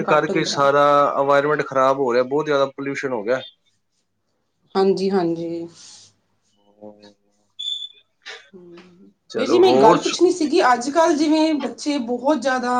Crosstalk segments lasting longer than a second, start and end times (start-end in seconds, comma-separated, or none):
none